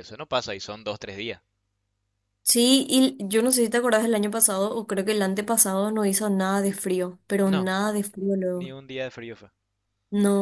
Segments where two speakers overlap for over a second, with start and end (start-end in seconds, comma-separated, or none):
none